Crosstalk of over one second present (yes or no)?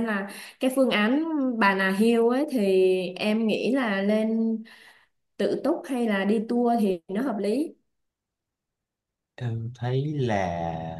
no